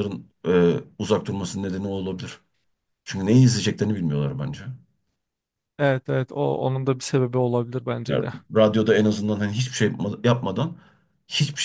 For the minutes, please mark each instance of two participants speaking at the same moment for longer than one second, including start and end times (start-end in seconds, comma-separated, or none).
none